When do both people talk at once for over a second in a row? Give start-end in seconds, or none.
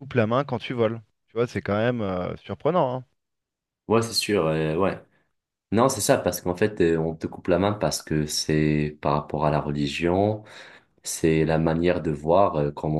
none